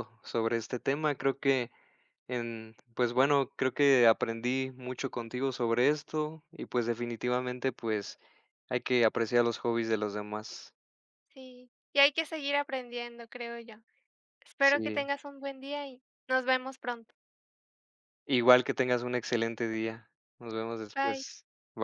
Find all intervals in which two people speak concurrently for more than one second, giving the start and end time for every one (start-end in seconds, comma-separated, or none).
none